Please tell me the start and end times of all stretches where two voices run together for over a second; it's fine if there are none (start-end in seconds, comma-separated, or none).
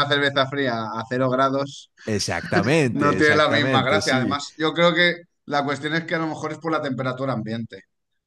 2.9-4.4